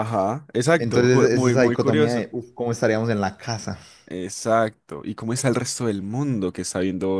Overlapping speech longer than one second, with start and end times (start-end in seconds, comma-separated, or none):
0.8-2.3